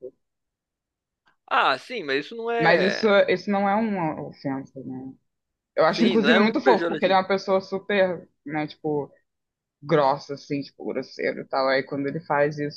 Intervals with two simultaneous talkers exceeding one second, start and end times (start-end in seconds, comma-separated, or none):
5.9-7.2